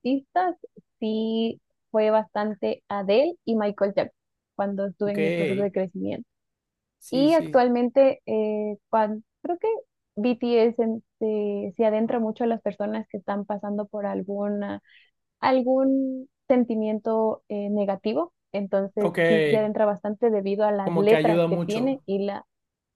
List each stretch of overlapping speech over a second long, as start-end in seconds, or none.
20.8-22.0